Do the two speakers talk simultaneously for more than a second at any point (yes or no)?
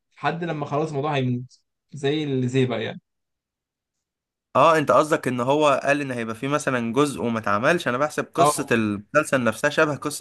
no